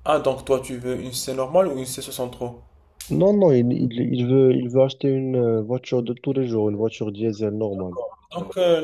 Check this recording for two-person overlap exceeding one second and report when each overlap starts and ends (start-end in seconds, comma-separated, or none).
none